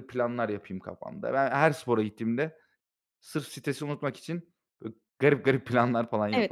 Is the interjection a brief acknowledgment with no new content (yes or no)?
no